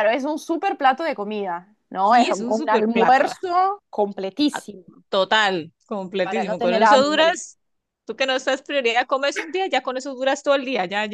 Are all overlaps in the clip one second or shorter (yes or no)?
no